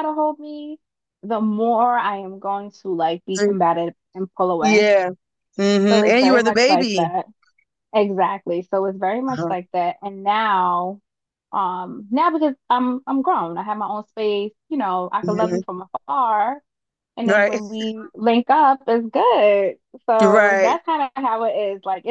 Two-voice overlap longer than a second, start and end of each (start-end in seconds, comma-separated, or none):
5.9-7.1